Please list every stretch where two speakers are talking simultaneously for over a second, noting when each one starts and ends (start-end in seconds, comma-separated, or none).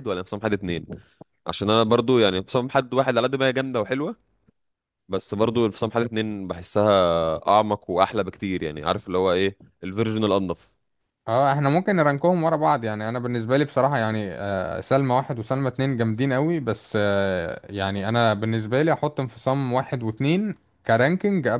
none